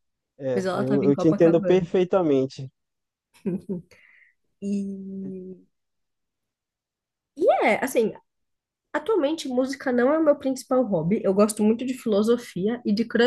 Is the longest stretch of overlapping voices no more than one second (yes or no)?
no